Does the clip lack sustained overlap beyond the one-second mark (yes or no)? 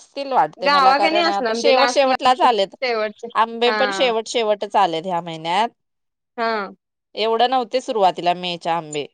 no